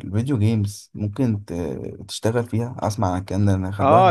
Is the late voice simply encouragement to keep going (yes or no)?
no